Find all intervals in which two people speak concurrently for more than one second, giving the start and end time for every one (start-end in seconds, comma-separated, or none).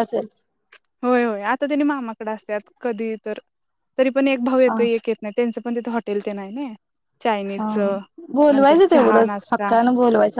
8.5-9.7